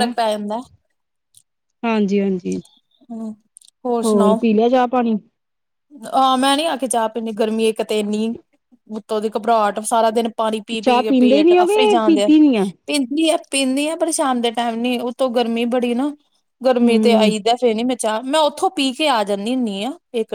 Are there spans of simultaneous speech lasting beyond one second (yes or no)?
yes